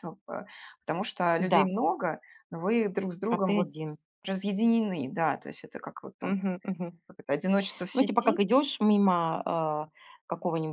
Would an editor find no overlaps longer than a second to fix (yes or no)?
yes